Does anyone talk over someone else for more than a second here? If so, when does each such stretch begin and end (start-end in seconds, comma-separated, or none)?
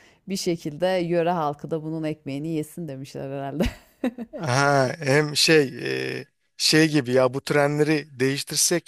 none